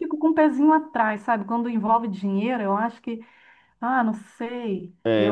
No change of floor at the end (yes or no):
yes